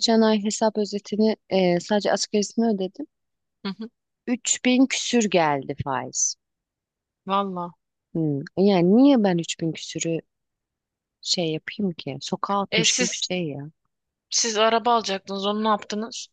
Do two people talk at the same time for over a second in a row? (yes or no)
no